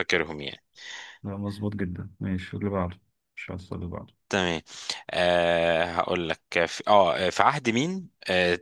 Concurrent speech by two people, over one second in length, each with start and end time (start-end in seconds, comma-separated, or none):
none